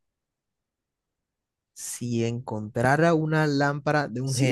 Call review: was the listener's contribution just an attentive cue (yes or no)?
no